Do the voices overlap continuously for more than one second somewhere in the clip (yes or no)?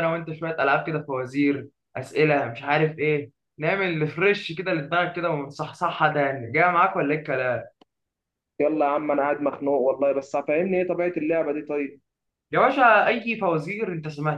no